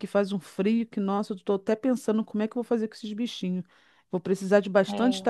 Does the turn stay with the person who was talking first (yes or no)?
yes